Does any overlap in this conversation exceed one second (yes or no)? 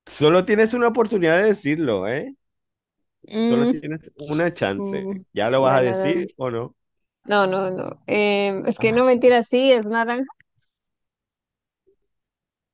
yes